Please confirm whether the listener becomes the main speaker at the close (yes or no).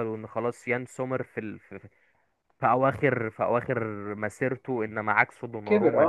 no